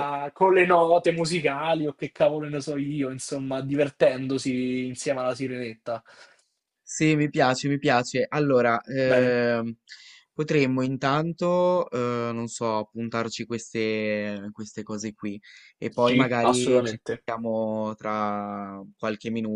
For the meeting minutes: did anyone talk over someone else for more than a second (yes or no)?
yes